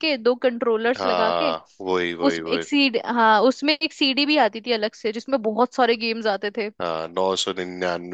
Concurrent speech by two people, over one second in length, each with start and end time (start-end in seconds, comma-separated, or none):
none